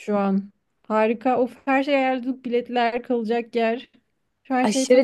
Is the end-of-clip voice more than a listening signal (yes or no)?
yes